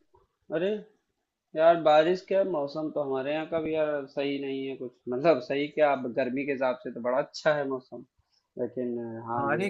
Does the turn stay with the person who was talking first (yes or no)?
no